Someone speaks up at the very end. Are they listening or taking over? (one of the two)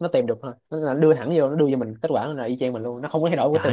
taking over